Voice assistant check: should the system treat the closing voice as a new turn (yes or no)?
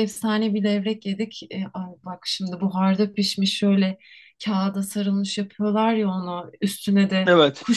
no